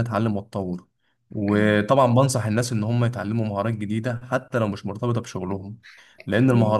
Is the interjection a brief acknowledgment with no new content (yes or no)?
yes